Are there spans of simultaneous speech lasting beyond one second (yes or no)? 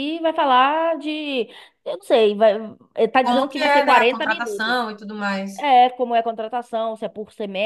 yes